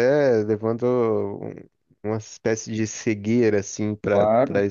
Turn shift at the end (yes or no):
no